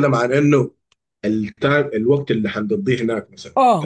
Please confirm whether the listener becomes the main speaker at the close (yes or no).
yes